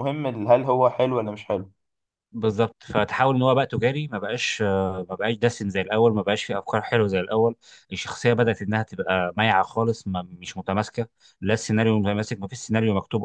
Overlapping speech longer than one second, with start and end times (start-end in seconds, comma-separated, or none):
none